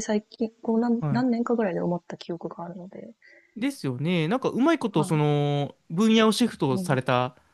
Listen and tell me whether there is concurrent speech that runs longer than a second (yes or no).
no